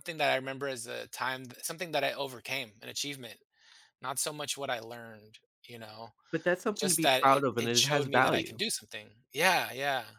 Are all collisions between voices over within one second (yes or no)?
no